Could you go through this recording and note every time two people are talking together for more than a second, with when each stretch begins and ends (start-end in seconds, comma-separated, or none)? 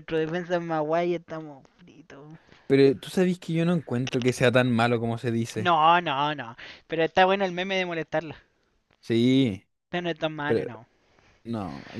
none